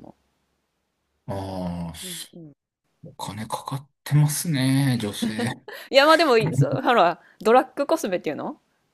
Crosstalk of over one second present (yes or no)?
no